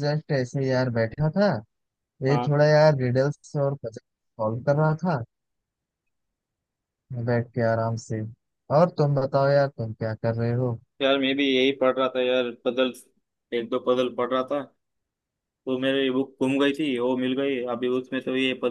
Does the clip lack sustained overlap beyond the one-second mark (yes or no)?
yes